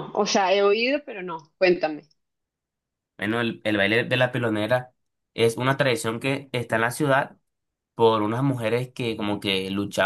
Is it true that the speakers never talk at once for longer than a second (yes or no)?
yes